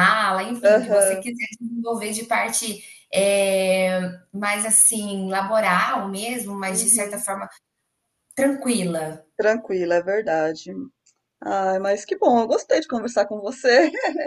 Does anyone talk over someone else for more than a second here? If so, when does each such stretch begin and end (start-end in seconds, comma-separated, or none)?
none